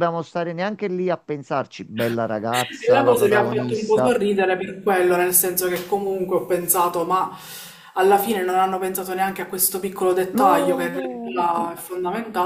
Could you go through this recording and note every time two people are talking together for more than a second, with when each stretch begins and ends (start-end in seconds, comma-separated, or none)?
2.9-4.2, 10.3-11.7